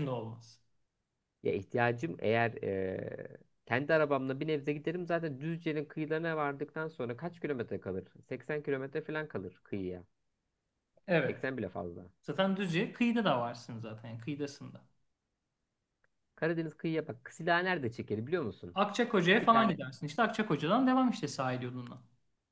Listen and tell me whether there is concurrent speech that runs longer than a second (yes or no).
no